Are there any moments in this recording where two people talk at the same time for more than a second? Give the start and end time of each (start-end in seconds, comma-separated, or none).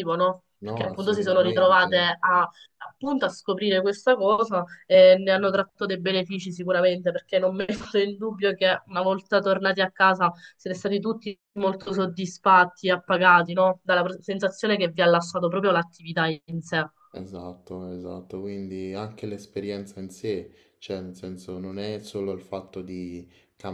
0.6-1.9